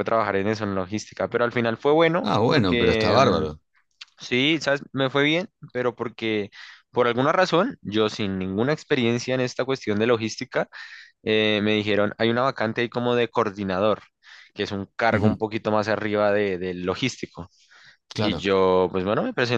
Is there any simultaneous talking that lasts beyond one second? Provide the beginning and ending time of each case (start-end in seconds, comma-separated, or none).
2.2-3.5